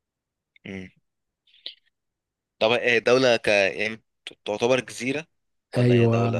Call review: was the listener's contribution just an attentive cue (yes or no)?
no